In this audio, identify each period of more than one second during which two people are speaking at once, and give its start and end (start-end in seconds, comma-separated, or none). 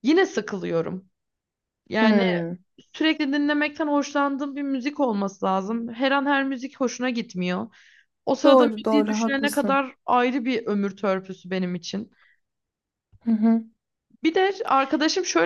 8.4-9.8